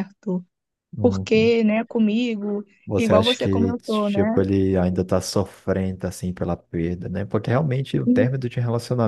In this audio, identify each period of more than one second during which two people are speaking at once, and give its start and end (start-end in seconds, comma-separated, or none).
2.9-4.4